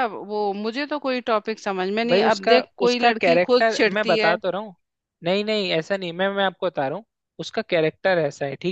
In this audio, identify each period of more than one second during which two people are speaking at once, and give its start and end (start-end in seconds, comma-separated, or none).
2.1-4.3